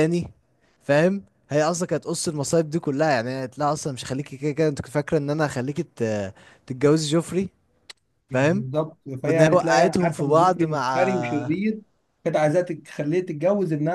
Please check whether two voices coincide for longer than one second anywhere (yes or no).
yes